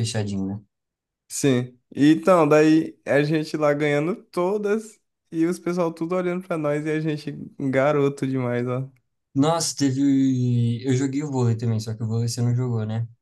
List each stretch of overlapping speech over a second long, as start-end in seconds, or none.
none